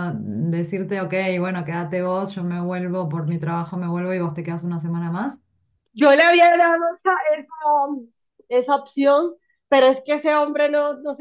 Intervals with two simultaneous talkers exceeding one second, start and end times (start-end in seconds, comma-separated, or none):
none